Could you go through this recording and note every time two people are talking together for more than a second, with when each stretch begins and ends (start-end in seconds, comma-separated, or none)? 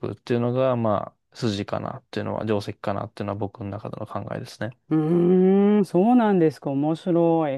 none